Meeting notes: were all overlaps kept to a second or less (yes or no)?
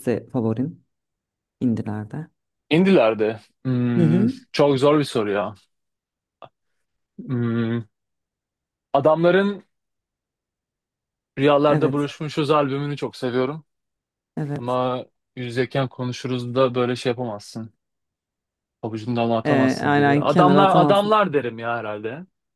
no